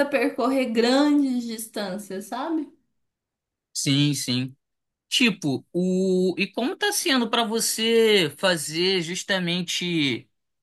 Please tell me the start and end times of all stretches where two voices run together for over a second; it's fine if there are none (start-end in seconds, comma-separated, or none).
none